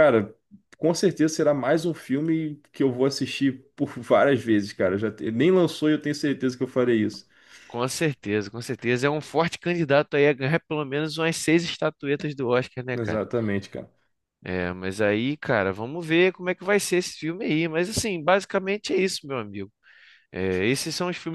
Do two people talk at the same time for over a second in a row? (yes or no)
no